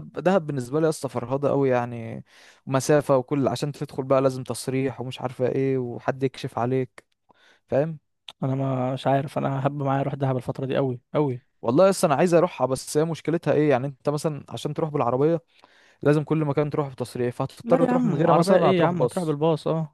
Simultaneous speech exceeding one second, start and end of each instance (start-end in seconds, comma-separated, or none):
17.6-19.4